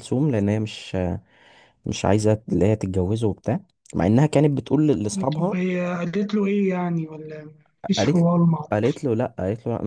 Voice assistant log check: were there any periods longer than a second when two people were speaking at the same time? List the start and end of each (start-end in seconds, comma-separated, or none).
none